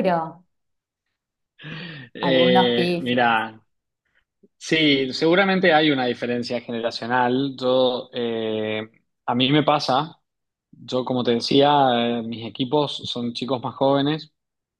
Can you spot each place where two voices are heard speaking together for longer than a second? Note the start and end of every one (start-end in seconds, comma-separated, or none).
2.2-3.4